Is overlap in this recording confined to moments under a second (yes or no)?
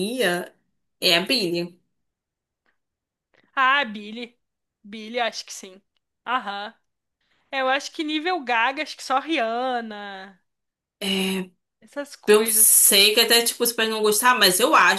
yes